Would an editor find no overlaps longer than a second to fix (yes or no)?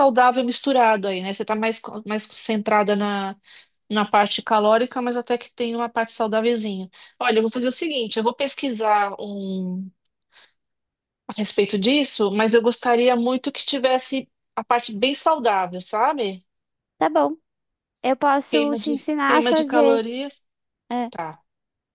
no